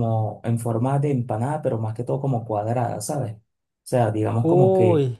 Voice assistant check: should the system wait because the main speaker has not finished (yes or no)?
yes